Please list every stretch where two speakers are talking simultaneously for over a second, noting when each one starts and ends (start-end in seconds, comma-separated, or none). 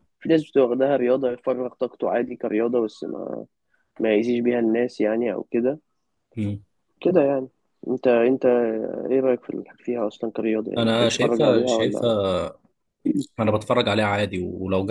10.8-12.1